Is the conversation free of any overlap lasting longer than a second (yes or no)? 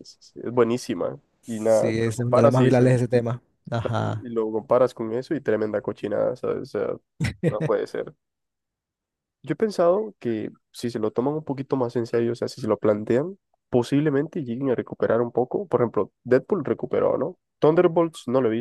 no